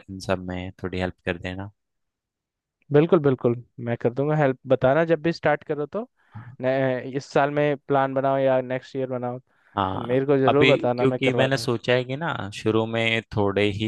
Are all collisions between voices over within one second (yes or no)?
no